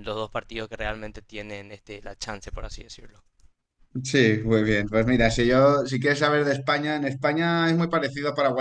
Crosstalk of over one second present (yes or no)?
no